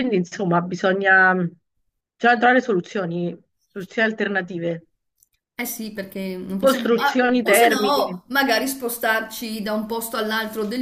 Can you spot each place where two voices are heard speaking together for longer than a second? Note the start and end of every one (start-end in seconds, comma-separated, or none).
6.6-8.2